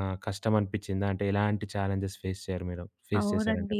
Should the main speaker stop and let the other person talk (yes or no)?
yes